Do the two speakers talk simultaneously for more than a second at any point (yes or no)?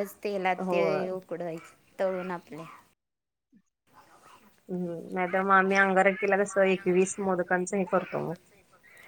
no